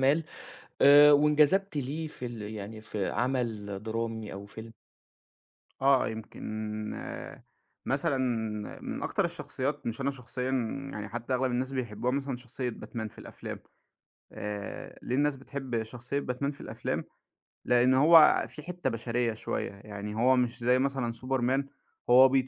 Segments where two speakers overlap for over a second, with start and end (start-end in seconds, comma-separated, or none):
none